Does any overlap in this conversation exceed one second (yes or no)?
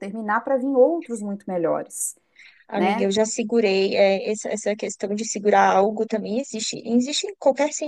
no